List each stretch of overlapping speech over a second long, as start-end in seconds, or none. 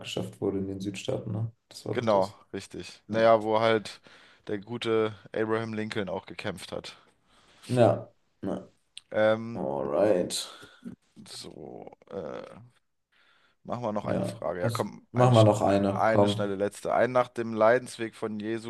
14.0-16.5